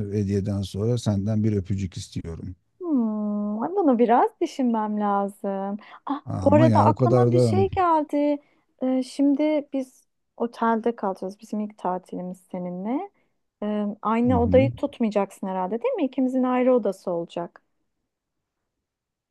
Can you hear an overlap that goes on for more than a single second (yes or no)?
yes